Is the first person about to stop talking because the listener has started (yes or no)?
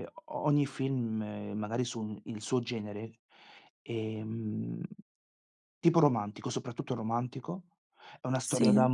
no